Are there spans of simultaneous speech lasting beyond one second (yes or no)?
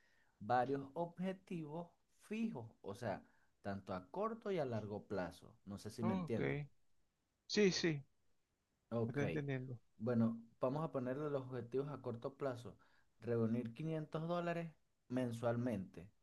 no